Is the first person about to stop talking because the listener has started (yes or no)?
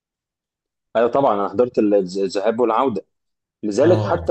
no